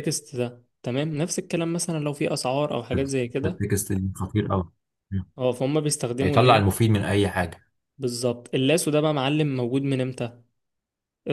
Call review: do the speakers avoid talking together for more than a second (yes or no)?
yes